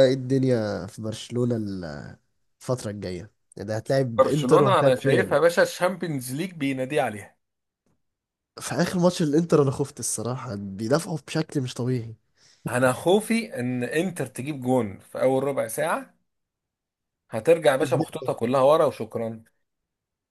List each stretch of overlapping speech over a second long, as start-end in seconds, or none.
4.2-5.4